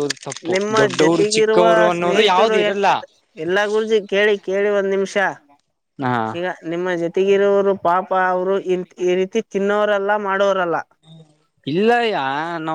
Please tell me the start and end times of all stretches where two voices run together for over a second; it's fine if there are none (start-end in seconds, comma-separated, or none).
0.5-2.9